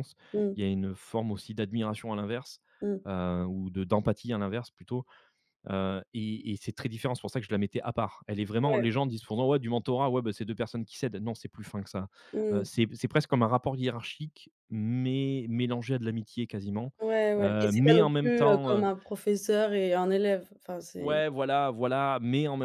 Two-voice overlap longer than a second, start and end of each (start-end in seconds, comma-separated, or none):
17.4-18.8